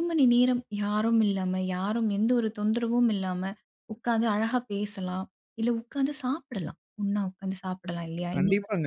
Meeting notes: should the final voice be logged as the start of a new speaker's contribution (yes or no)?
yes